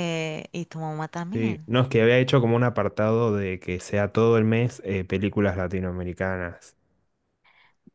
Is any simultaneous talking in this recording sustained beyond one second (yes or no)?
no